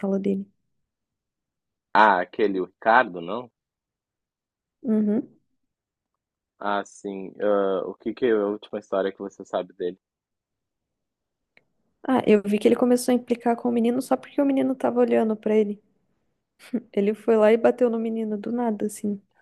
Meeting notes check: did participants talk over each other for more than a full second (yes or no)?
no